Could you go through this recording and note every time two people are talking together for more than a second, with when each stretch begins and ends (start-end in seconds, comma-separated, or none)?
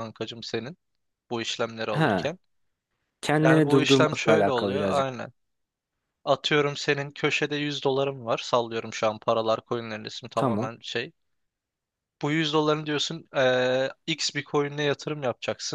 3.4-5.2